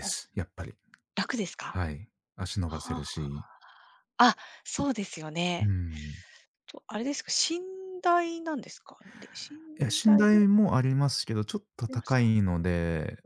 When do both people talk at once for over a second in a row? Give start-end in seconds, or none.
none